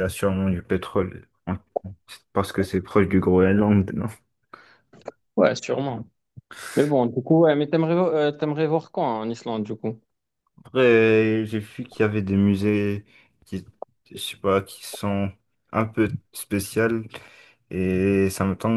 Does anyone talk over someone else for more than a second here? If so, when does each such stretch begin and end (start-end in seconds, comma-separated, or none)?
none